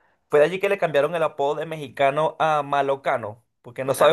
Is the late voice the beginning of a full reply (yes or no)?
yes